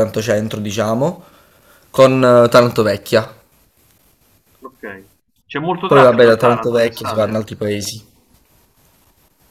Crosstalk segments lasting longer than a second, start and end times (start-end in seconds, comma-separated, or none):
5.9-7.4